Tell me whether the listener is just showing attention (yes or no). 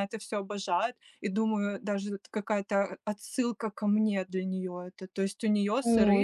yes